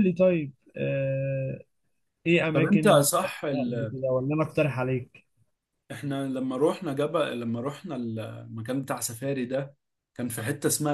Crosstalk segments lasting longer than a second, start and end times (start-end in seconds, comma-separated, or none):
2.5-3.9